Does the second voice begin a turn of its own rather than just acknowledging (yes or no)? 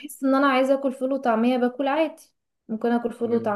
no